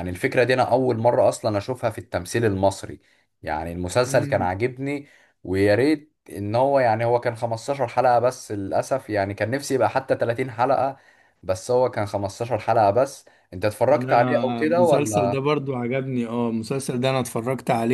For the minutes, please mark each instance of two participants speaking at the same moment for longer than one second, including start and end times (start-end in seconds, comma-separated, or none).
13.9-15.5